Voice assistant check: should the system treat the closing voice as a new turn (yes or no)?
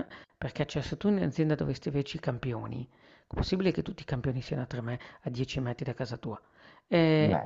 no